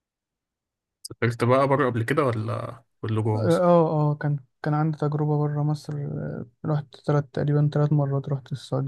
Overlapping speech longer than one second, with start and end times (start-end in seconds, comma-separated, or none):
none